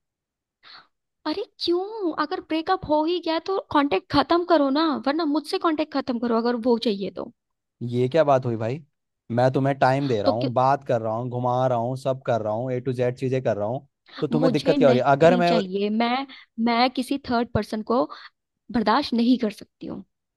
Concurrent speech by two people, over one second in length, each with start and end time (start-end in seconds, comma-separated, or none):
14.3-15.5